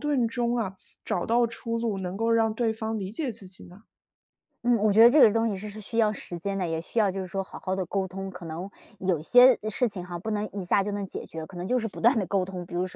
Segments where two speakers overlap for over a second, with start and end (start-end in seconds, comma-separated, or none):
none